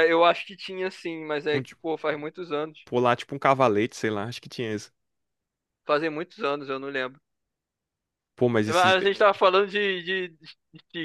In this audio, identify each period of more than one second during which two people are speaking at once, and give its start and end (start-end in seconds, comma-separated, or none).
none